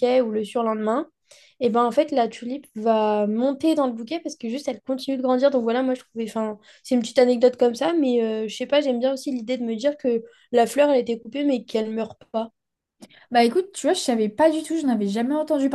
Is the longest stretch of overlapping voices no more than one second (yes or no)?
yes